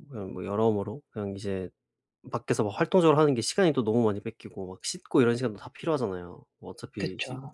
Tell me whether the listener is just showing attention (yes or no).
yes